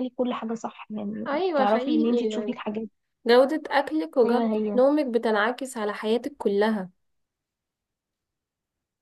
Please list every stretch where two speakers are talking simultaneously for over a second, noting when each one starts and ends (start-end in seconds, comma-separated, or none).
1.3-2.6